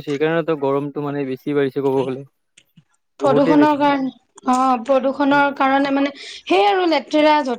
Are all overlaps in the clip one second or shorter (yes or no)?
yes